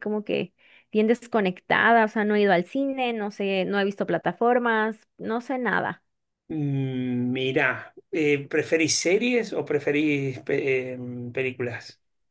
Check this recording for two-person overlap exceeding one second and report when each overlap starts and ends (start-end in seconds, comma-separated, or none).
none